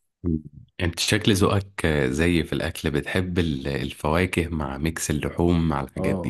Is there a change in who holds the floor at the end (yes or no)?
yes